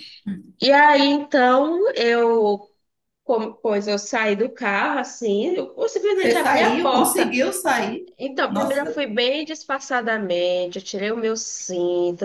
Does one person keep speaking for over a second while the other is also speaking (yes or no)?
yes